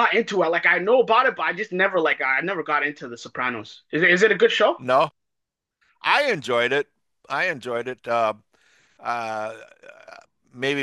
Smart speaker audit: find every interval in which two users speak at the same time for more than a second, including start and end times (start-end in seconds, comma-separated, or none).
none